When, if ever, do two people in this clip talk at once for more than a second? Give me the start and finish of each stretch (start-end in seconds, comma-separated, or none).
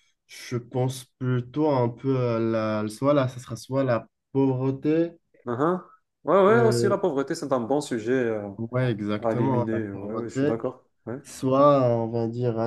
9.2-10.5